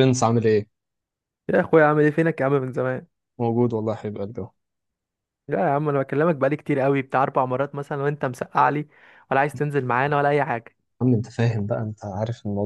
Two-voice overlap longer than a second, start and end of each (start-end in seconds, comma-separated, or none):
none